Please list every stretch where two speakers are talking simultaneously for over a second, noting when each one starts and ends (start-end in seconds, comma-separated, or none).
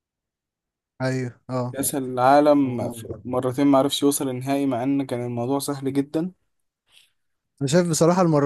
none